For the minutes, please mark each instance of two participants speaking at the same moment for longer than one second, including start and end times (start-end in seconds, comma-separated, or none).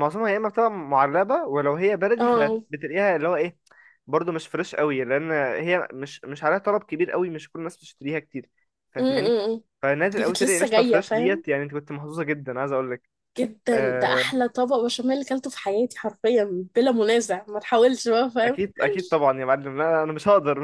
10.2-11.4